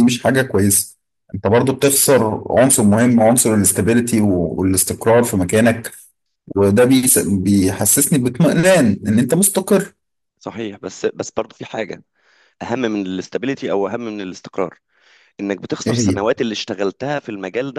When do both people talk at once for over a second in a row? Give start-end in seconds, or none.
none